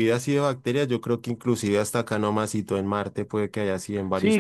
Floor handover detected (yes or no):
yes